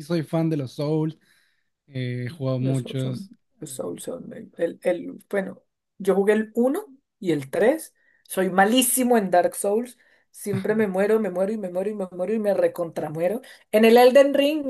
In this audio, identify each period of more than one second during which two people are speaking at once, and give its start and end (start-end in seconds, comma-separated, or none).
2.6-4.0